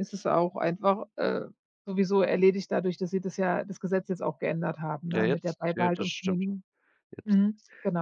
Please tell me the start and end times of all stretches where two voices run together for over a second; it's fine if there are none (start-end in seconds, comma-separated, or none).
5.1-6.4